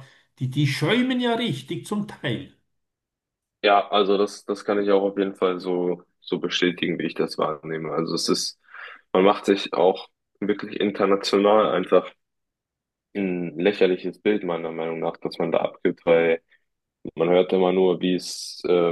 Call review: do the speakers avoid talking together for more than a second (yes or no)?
yes